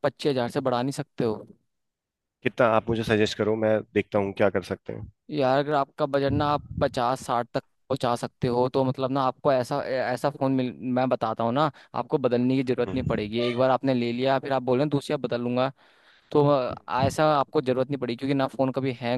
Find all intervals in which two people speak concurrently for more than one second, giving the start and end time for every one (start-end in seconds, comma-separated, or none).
none